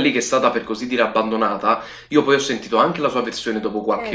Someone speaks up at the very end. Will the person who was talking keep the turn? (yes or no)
yes